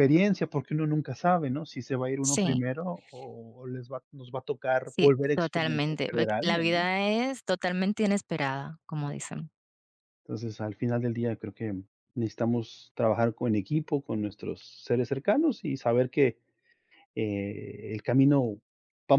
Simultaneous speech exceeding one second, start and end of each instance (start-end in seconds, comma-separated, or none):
4.8-6.8